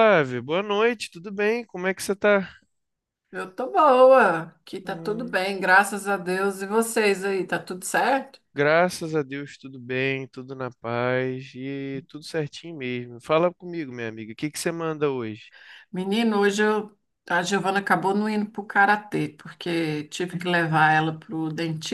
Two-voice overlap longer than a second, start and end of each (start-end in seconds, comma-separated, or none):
none